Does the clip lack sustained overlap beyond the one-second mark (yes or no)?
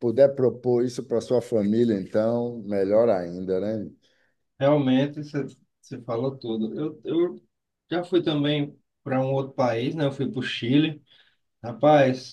yes